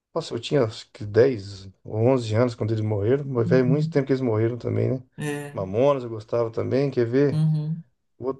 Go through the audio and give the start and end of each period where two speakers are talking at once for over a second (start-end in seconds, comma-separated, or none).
none